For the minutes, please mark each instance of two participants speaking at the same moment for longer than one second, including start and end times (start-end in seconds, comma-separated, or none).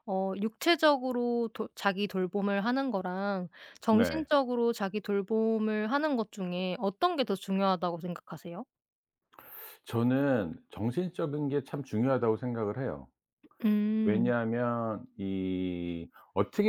none